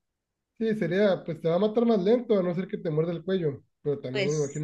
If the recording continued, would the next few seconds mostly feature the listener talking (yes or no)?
no